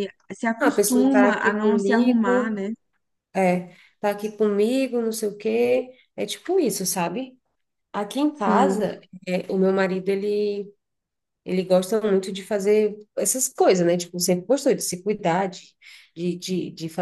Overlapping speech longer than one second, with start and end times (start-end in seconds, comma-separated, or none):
0.6-2.6